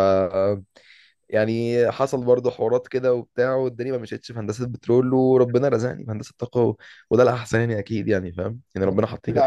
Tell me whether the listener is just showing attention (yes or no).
no